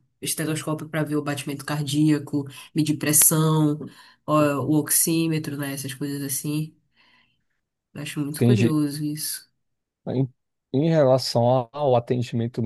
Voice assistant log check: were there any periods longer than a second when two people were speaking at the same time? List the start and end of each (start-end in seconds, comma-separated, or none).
none